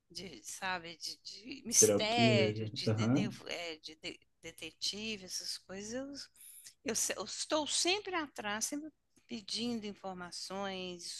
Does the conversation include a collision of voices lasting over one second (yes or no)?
yes